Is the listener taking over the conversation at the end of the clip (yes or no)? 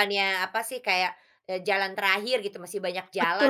yes